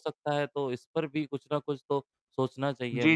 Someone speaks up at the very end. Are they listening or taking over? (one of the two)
taking over